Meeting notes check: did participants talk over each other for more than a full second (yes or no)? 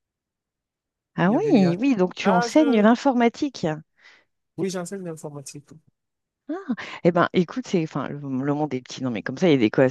yes